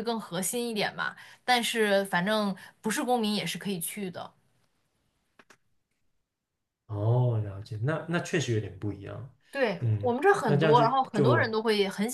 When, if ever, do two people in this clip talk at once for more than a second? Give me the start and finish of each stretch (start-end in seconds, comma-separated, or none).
9.8-11.6